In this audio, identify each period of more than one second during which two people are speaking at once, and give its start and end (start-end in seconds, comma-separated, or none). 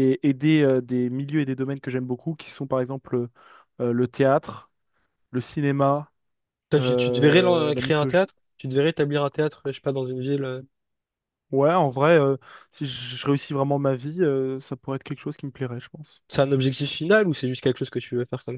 6.8-8.3